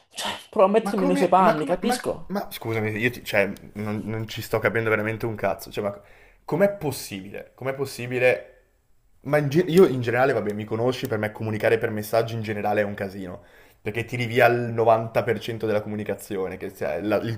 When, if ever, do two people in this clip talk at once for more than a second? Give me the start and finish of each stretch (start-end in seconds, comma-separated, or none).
0.8-2.3